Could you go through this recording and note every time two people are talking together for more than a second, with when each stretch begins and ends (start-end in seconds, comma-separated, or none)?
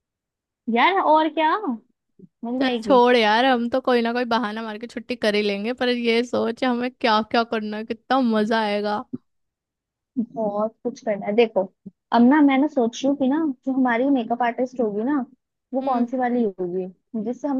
none